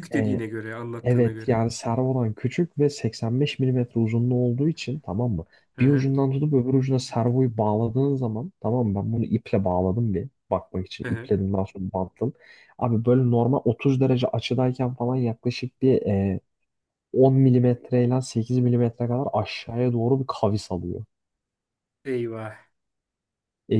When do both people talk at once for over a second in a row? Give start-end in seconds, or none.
none